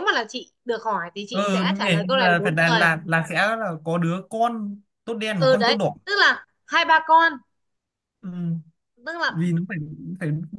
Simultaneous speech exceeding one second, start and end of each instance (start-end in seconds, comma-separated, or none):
1.3-2.9